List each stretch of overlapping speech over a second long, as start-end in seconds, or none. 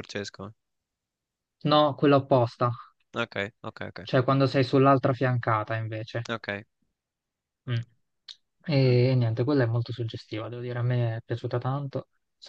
none